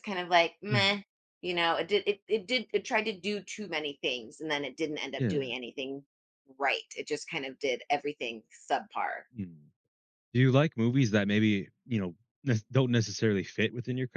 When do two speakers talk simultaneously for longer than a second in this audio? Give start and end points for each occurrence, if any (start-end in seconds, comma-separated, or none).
none